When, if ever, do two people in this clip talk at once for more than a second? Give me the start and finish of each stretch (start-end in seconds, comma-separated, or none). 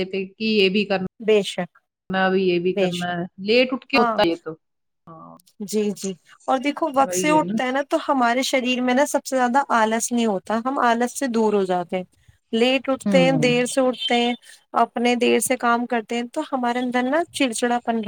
none